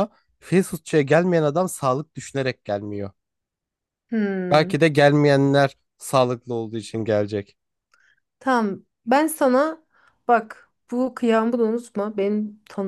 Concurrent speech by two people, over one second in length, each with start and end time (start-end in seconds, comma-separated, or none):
none